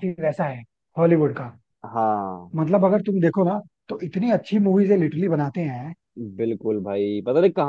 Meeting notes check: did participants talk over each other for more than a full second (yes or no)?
no